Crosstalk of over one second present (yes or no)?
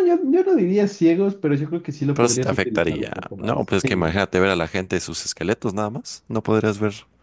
yes